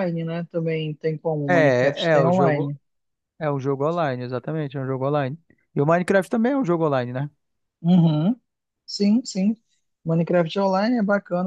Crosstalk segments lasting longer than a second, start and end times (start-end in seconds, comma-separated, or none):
1.5-2.7